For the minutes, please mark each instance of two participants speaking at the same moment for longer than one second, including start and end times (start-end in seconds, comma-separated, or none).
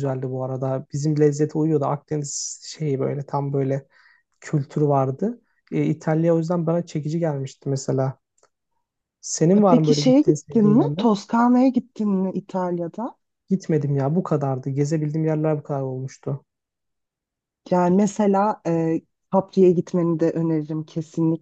9.5-11.2